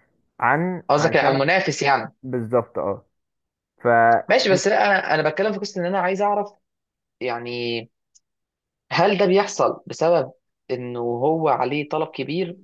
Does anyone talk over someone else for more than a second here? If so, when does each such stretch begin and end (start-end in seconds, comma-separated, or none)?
none